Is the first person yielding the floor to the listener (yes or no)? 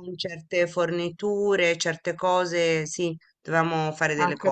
yes